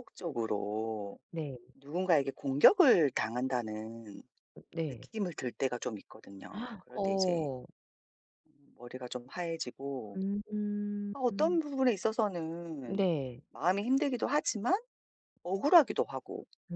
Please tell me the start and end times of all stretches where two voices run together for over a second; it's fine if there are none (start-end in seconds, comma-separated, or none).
none